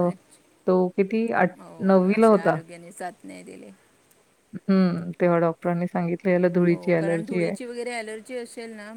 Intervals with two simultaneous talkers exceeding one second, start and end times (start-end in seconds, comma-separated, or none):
none